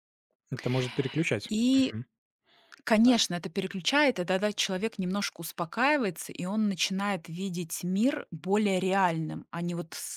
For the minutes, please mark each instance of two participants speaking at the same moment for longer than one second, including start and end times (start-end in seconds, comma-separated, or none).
none